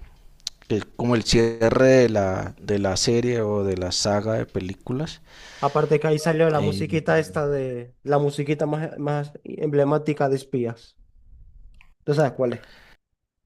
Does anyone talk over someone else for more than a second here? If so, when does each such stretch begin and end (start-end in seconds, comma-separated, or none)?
none